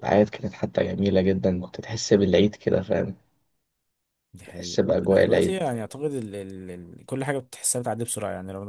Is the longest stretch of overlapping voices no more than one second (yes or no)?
no